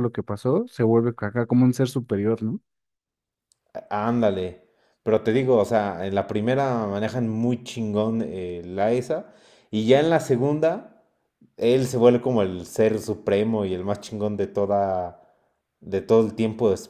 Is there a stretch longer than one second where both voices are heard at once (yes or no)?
no